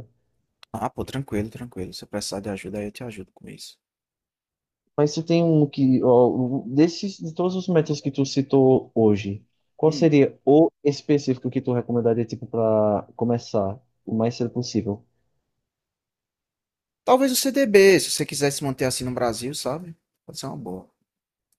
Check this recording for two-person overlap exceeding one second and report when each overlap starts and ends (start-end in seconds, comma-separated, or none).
none